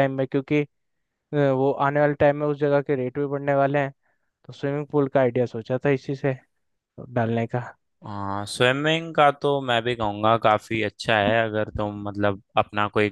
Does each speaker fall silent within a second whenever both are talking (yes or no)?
yes